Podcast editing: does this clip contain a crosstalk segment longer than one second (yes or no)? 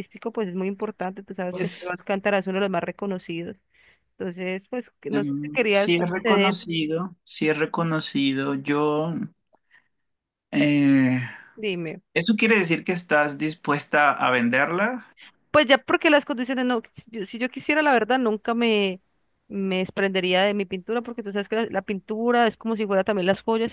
yes